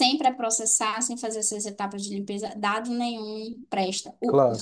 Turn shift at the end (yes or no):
no